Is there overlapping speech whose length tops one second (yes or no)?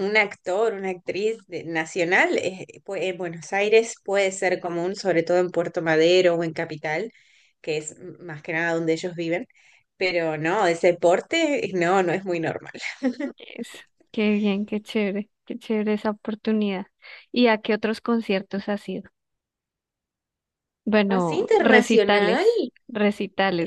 yes